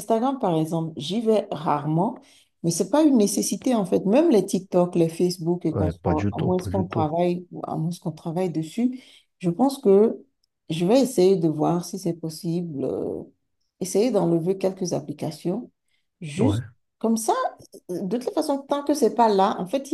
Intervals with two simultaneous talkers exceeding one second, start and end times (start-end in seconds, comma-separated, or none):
5.7-7.1